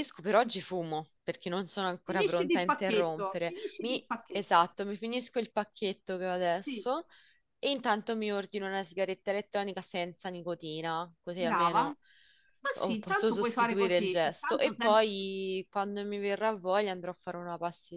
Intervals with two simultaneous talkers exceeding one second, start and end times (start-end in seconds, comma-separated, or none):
2.0-4.7, 12.7-15.0